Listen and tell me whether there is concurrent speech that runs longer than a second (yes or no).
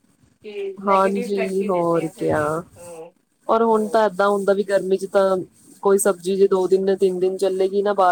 yes